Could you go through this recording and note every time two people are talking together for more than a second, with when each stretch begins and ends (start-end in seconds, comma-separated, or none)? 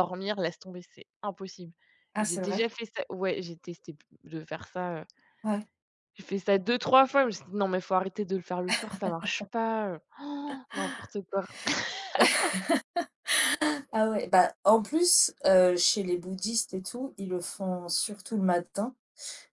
none